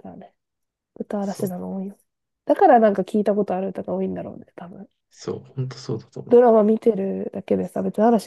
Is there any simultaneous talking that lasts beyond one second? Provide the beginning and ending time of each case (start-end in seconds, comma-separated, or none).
none